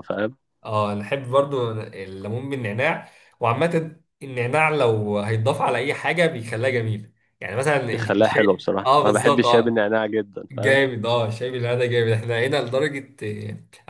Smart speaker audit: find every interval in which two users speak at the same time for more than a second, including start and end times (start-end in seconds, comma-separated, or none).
7.9-9.8